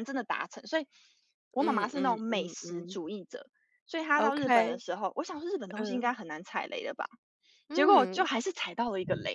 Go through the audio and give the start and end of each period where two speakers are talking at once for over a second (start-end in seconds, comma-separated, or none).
1.6-3.0